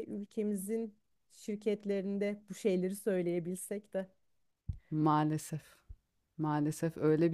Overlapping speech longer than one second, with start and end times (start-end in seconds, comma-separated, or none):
none